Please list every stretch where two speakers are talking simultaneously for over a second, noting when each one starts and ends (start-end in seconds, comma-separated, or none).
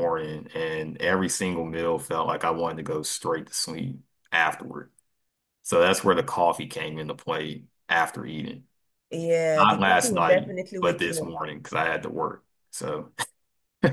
9.6-11.4